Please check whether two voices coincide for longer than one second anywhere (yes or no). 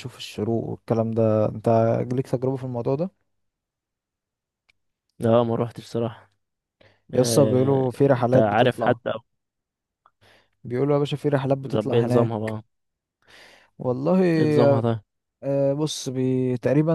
yes